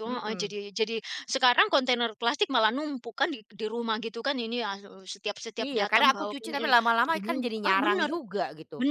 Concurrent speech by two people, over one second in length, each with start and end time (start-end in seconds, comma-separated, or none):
5.7-8.1